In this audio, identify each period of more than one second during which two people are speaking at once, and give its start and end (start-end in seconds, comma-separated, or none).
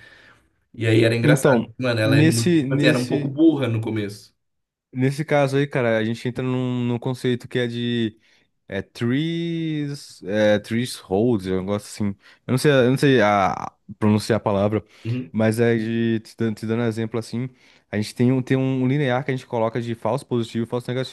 1.2-3.3